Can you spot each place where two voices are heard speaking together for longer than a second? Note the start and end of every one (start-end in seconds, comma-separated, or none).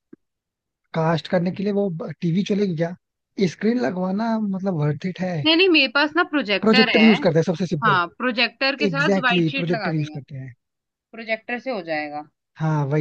8.9-10.2